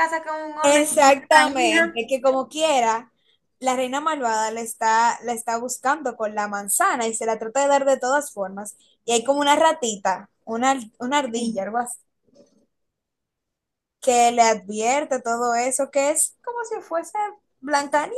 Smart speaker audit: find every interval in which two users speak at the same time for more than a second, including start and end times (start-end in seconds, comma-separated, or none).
0.6-2.0